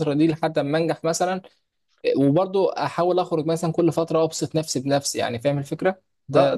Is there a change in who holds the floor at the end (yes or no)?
yes